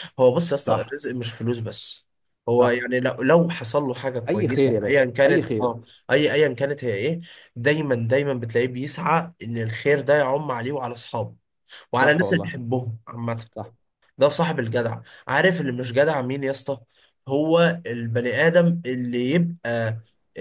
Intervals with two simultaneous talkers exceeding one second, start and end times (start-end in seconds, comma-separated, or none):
4.3-5.7